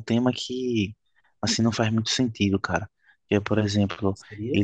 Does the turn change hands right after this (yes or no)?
no